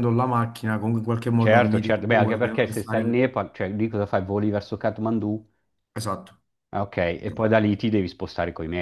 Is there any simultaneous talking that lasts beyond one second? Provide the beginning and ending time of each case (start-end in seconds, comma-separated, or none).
1.4-3.3